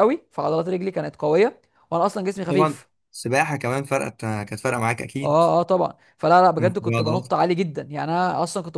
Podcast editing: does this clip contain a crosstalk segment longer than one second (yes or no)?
no